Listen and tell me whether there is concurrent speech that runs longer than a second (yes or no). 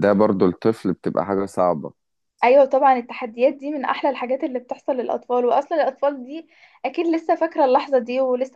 no